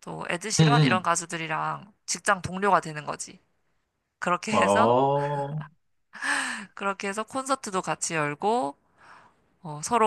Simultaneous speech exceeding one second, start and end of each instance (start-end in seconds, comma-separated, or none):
none